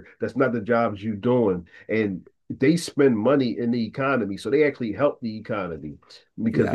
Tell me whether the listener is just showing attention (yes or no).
no